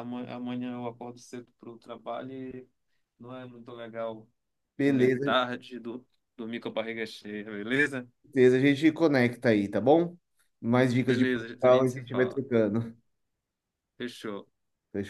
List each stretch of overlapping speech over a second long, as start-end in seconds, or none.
11.0-12.4